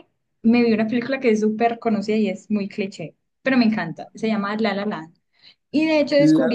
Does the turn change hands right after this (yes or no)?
no